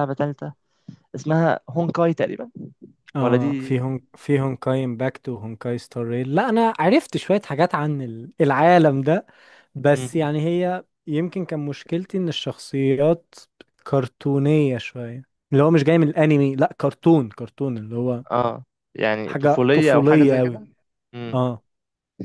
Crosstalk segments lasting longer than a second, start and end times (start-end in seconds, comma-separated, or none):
19.3-20.6